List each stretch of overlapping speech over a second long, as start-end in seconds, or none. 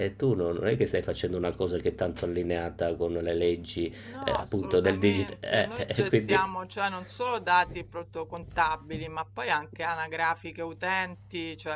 4.1-5.4